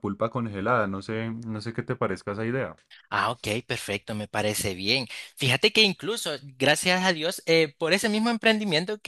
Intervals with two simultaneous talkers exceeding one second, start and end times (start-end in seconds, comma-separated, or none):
none